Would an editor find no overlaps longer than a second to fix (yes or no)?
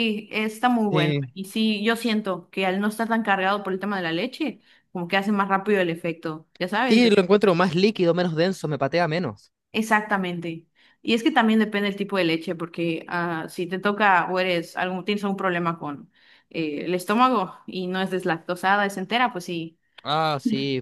yes